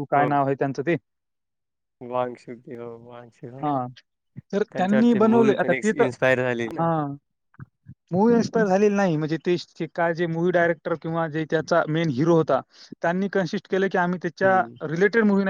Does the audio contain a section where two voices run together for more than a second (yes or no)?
yes